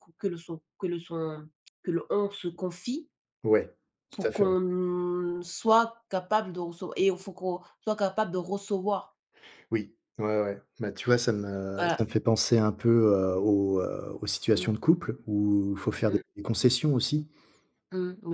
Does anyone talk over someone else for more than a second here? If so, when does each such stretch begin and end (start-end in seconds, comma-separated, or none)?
none